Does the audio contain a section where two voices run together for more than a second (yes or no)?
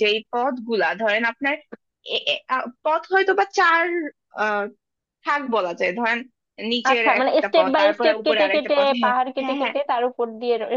yes